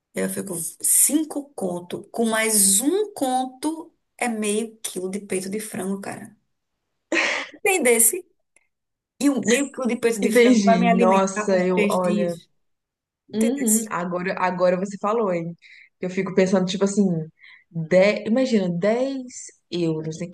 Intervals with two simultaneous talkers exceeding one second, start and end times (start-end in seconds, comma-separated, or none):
10.2-12.3